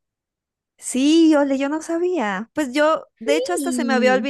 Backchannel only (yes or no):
yes